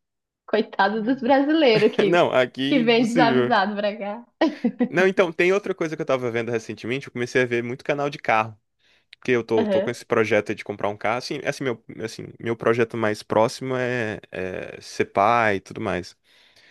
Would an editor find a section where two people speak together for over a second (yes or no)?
yes